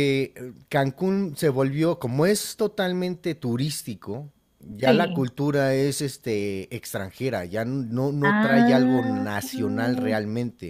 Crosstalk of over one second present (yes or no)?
yes